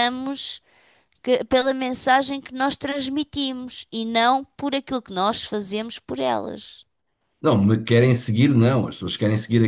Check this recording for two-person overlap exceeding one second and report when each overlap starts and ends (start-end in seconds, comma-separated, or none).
none